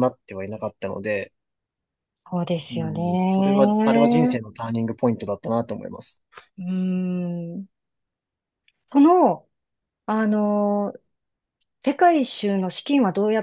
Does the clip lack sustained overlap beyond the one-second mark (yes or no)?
no